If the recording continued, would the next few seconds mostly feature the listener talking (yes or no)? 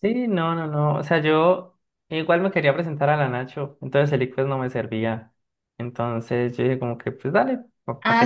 yes